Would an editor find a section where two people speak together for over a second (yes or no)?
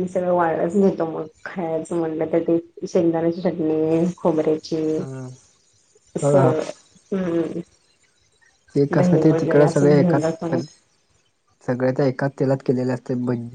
yes